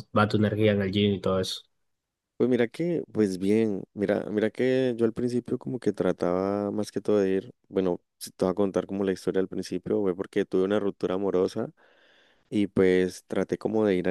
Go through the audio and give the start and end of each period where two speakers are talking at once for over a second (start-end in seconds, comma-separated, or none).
none